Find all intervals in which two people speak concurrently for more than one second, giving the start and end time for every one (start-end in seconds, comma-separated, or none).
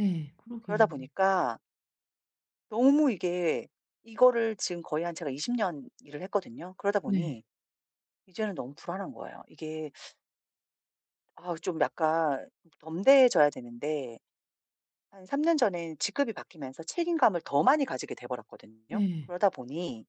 none